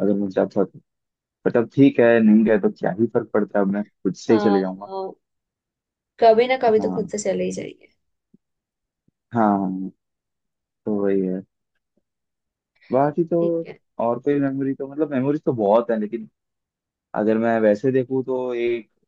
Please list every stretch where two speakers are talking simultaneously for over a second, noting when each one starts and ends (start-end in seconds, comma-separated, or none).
none